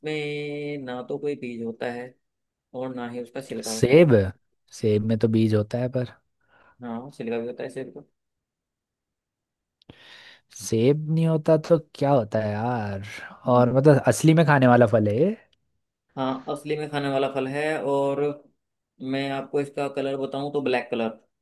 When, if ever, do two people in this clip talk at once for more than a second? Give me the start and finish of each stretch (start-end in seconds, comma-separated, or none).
none